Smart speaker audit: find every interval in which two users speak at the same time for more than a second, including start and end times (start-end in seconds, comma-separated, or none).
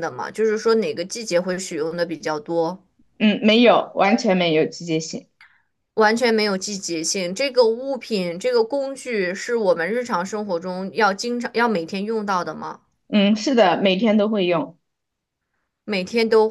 none